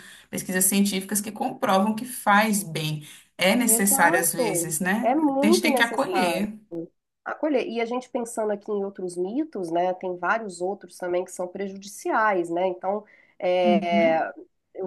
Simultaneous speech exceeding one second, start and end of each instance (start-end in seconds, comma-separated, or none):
3.6-6.5